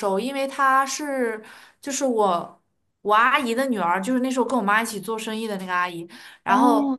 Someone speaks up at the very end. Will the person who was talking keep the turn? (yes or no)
yes